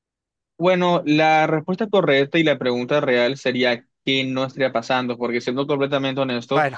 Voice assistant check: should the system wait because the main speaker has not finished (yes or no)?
yes